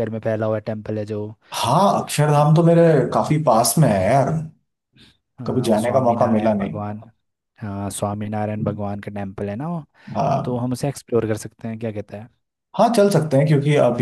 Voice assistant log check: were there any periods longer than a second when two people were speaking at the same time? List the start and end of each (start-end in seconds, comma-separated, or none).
5.5-6.8